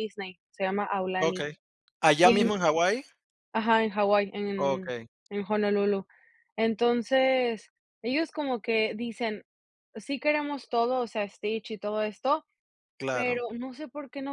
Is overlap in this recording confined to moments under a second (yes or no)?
yes